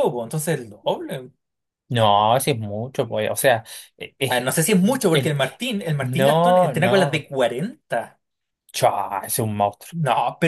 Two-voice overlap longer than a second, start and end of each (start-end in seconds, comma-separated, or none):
6.0-7.3